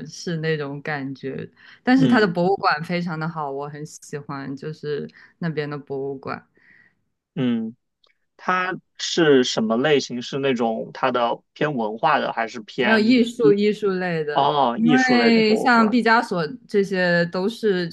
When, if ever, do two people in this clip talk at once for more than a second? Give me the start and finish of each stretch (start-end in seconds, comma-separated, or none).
14.3-15.9